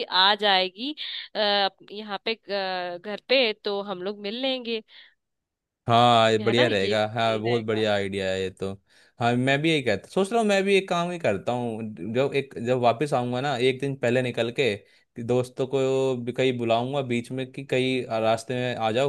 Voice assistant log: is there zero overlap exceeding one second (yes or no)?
no